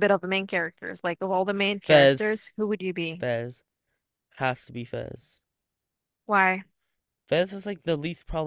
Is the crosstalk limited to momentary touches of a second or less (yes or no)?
yes